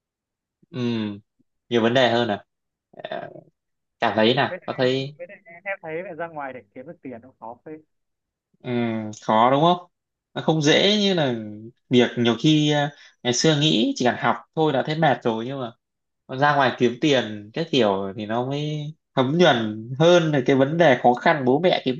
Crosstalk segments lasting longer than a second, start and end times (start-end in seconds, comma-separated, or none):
none